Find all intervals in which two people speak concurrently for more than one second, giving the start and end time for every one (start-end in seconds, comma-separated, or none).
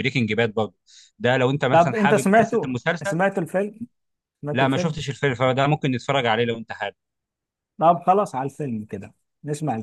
1.7-3.2